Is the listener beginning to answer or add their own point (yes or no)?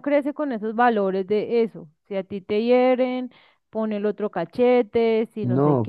yes